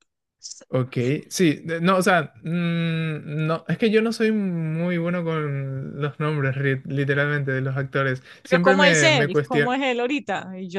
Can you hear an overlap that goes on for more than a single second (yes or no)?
yes